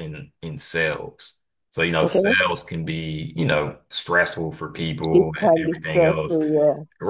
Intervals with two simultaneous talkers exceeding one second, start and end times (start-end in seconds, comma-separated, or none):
5.1-6.4